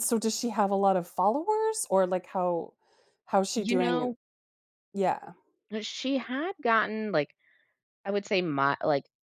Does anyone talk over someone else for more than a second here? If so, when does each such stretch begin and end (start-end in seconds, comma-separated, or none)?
none